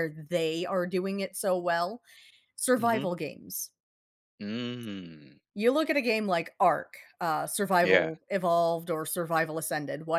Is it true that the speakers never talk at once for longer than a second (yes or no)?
yes